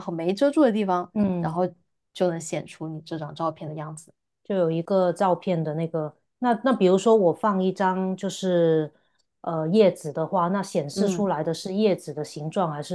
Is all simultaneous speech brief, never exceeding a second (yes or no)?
yes